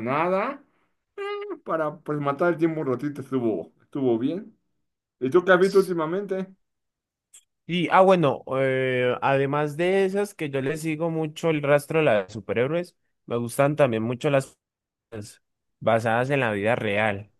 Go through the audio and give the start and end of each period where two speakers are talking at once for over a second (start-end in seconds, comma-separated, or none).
none